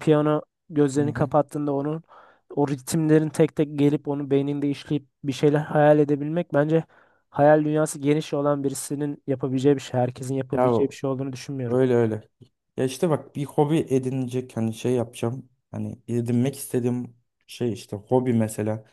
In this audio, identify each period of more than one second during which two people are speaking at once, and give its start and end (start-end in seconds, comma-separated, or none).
none